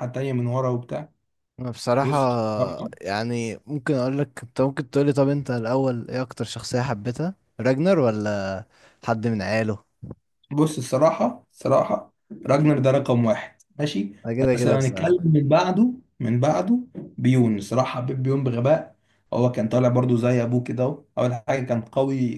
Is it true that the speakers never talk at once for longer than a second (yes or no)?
yes